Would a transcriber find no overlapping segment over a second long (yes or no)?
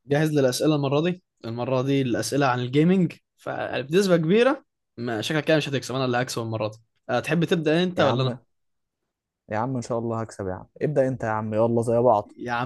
yes